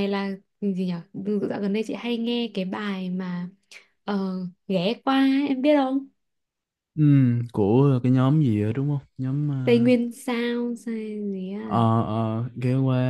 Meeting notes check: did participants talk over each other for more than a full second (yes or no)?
no